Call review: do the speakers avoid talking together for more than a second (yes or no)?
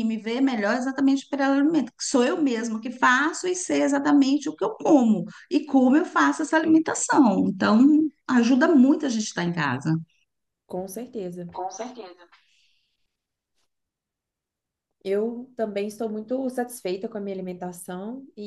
yes